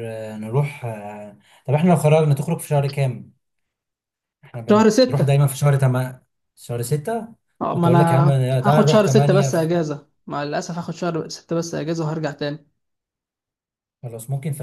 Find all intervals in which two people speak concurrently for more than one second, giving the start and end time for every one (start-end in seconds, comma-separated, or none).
8.6-9.9